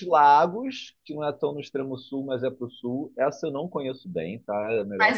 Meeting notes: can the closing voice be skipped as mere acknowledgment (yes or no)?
no